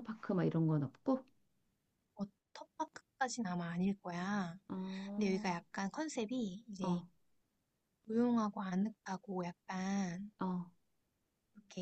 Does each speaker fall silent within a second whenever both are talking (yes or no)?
yes